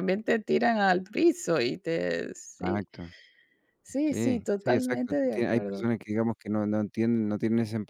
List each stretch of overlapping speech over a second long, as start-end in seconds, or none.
4.1-5.9